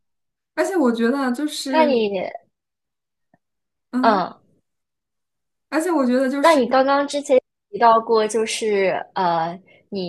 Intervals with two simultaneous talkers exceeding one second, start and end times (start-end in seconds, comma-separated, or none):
none